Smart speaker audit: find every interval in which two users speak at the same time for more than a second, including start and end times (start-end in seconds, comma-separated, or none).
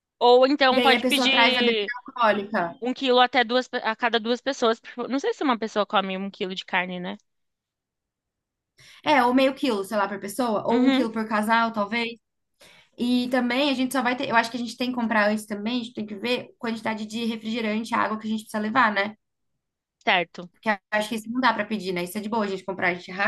0.7-1.9